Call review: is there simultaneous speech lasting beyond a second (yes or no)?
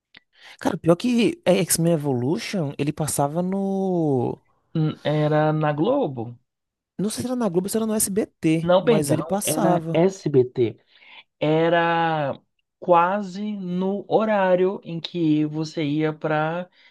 yes